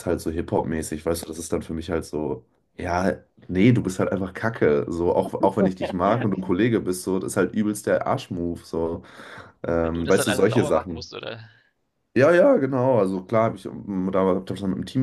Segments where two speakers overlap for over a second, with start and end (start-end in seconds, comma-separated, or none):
9.8-11.1